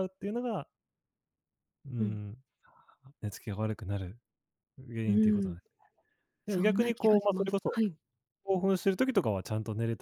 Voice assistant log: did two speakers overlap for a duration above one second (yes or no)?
yes